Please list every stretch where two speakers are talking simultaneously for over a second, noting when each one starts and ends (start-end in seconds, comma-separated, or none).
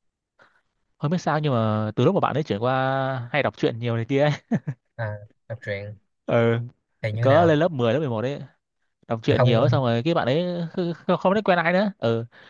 none